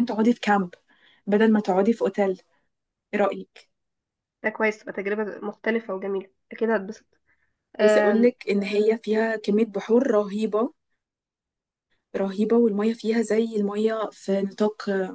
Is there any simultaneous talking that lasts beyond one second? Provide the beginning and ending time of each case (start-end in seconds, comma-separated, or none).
none